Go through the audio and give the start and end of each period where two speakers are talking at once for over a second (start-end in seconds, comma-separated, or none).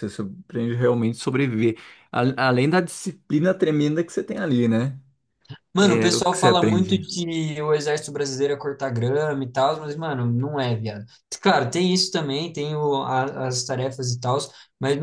5.8-7.0